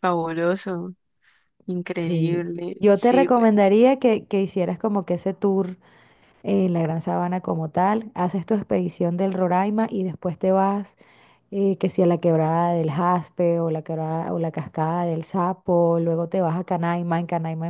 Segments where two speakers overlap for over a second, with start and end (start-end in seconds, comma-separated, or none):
2.0-3.5